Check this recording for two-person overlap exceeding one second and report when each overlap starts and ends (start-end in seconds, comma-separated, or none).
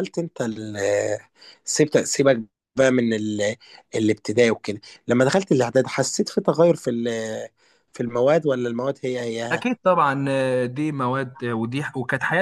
none